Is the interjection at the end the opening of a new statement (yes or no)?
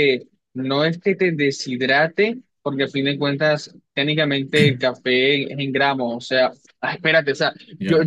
no